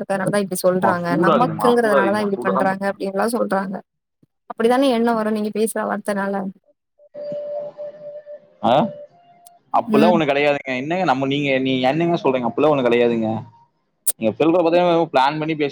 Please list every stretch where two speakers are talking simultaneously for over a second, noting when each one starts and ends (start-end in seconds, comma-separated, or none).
0.8-2.7